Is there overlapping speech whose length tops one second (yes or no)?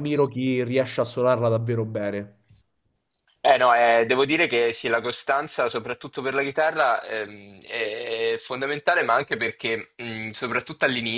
no